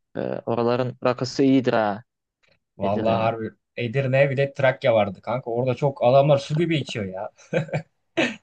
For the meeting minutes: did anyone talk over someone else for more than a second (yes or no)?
no